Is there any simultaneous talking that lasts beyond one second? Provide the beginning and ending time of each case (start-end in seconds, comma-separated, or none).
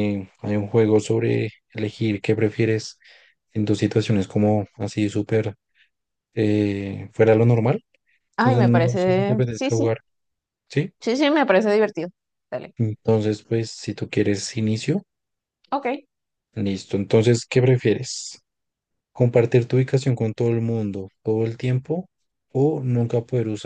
8.4-9.9